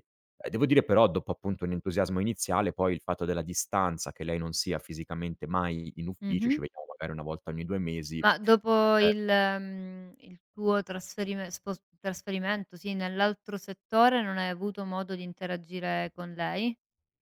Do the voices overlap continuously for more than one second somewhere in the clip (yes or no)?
no